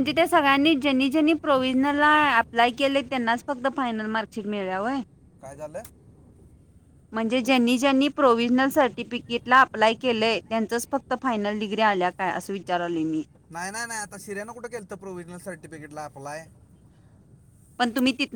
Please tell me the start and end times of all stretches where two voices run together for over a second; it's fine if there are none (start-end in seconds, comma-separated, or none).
none